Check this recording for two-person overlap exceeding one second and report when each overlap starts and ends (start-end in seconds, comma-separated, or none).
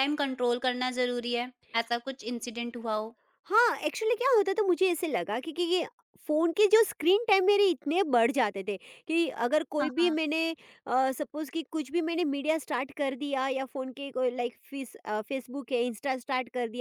none